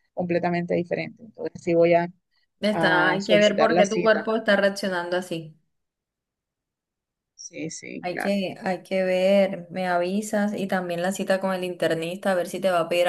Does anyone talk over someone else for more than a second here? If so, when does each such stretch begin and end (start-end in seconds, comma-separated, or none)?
2.7-4.3